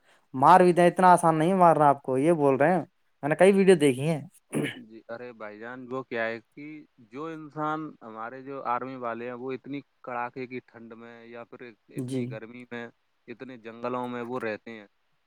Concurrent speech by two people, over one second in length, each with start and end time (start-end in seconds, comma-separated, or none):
none